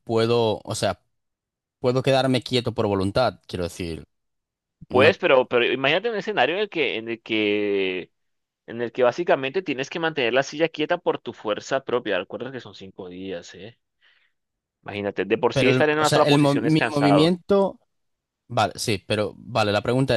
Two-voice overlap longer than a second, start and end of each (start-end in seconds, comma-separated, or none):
15.5-17.3